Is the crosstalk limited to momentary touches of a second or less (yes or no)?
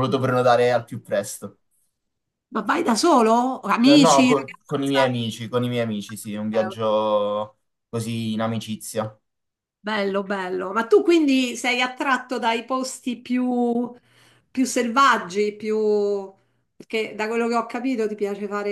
no